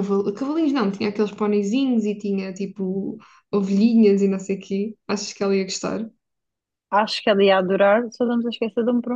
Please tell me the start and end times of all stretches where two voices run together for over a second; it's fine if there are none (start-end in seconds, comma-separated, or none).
none